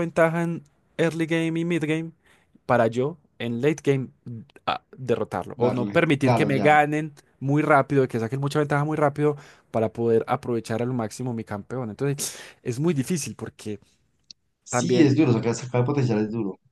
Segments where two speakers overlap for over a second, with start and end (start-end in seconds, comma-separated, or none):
5.5-6.8